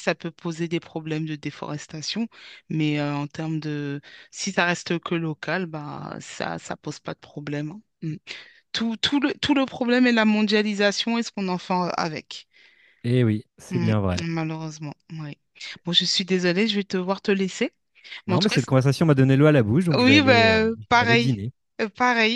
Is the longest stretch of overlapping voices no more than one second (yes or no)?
no